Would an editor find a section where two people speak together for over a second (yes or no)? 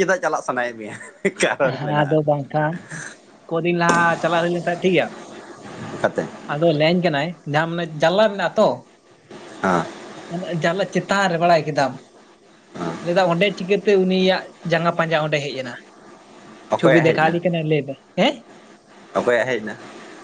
no